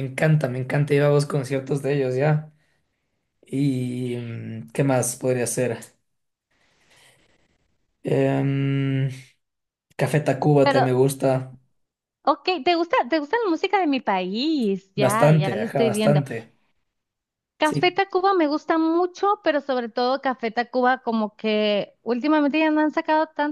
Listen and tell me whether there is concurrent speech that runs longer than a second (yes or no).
yes